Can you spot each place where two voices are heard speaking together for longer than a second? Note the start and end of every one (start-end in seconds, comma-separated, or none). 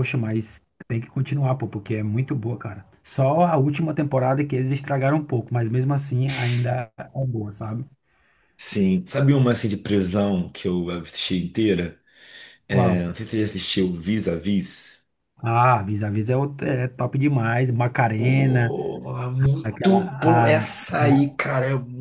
19.6-21.4